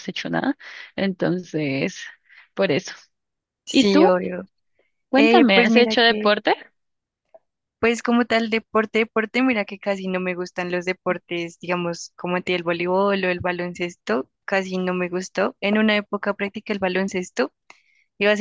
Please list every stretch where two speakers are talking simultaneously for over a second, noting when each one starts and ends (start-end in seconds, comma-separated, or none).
5.1-6.3